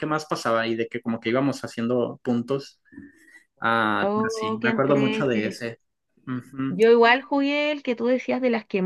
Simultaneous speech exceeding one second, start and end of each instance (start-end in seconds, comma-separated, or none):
4.0-5.6